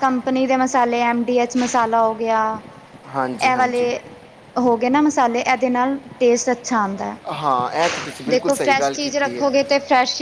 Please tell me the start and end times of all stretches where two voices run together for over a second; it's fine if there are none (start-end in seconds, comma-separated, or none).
7.8-9.4